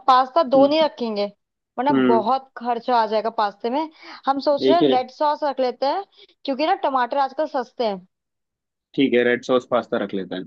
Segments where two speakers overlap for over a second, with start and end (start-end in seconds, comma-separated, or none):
none